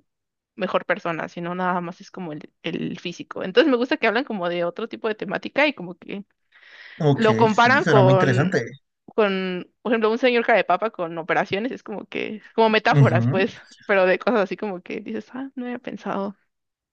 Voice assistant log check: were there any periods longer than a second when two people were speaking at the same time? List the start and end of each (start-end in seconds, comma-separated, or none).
7.1-8.6